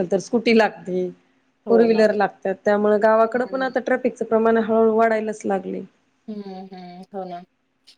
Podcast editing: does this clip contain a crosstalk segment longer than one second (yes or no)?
no